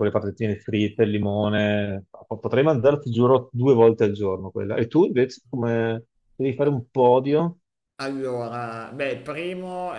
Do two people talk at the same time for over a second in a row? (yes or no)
no